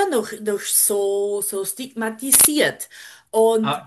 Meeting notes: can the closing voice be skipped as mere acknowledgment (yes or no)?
no